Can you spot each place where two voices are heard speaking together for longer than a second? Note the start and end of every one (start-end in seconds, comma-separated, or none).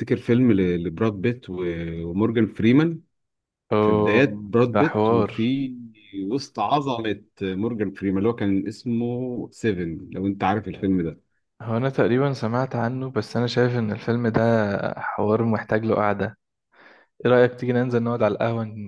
3.8-5.3